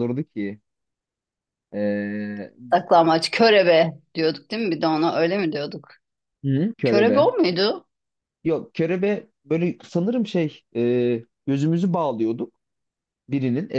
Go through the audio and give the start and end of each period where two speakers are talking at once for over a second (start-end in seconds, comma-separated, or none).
none